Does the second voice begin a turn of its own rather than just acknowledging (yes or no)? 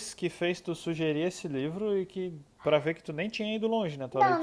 yes